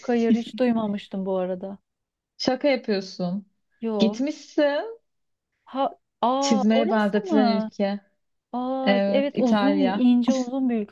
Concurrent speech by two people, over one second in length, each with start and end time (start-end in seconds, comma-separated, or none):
6.4-7.7, 8.8-10.1